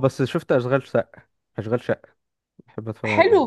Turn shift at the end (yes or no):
yes